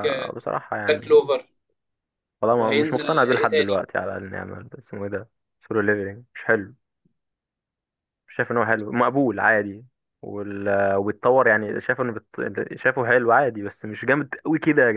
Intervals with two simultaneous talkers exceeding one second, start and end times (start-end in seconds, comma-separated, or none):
2.5-3.9